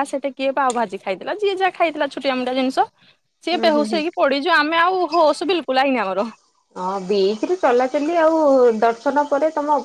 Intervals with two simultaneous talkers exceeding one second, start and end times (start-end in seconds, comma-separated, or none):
none